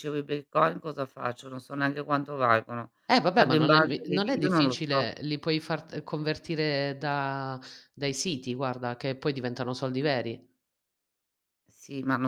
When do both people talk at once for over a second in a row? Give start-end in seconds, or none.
3.3-5.1